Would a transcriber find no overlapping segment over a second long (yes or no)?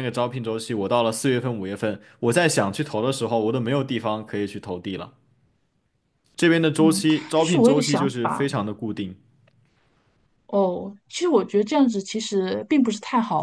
no